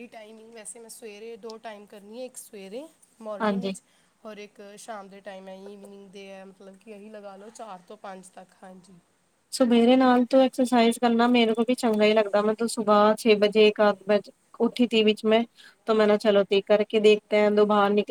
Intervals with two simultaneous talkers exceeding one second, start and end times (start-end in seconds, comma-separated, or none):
none